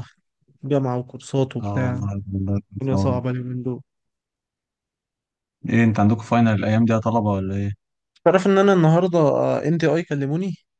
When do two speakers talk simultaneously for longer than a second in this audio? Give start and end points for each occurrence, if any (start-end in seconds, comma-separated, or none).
none